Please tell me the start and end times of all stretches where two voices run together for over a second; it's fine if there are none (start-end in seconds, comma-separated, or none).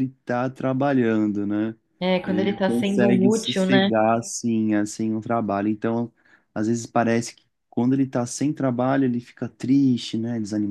2.3-3.9